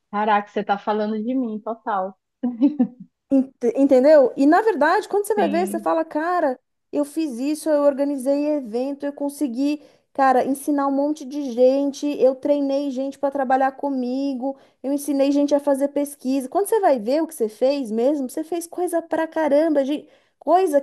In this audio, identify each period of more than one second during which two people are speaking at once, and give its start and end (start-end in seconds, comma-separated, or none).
none